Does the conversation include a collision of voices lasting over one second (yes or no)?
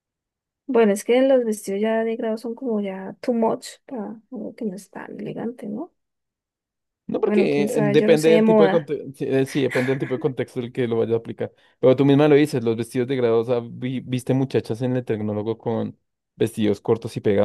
yes